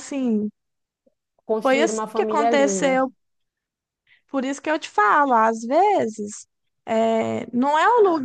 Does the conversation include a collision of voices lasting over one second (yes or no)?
yes